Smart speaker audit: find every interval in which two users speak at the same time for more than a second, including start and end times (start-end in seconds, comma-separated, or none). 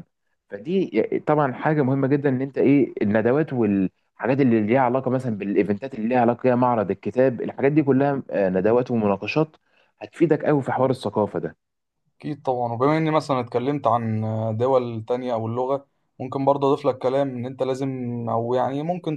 none